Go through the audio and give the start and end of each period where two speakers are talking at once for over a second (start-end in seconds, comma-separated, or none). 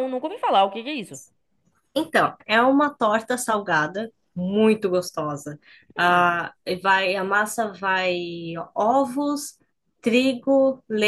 none